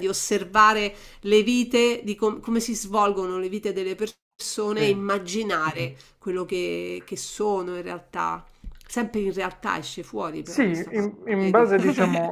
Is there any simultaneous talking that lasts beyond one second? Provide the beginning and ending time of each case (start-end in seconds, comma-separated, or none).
10.4-11.7